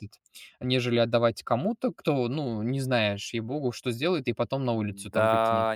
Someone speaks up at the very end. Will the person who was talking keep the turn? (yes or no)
no